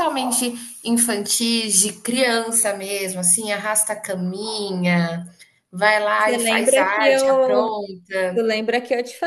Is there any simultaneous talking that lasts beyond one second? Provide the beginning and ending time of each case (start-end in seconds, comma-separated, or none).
6.2-7.8